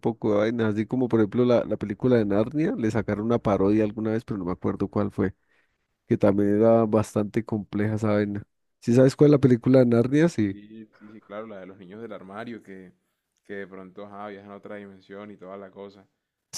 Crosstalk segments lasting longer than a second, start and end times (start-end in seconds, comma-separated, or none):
none